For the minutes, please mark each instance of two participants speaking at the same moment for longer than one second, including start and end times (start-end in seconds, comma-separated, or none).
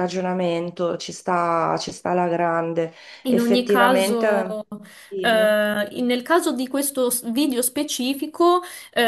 3.3-4.6